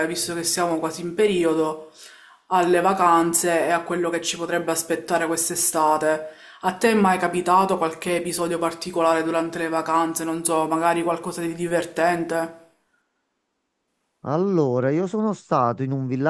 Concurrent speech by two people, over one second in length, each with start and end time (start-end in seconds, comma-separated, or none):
none